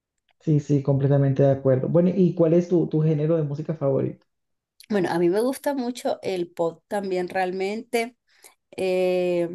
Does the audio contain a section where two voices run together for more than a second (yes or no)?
no